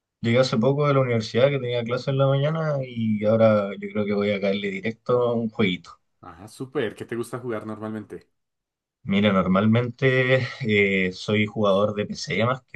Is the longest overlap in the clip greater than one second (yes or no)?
no